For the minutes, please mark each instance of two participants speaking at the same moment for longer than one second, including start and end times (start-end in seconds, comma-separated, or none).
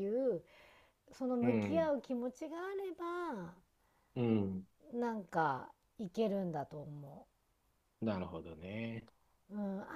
none